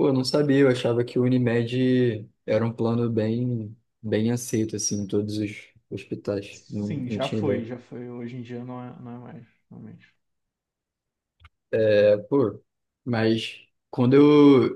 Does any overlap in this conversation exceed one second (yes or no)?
yes